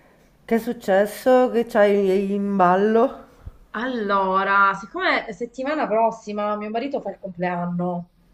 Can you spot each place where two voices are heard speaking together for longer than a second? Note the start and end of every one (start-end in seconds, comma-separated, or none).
none